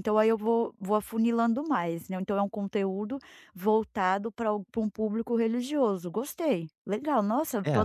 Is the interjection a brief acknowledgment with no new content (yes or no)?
no